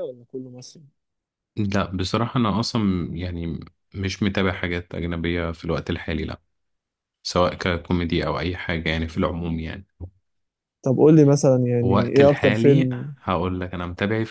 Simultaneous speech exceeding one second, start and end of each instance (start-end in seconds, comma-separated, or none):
11.8-13.0